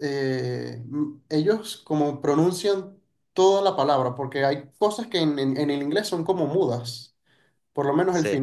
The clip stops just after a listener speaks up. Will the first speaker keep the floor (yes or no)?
yes